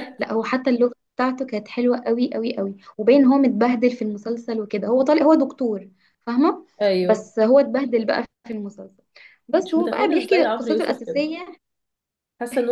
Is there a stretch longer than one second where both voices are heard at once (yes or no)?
yes